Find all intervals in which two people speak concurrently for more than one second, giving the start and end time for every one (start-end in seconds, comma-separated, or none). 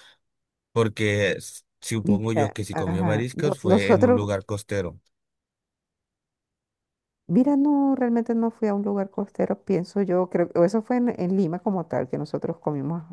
2.0-4.2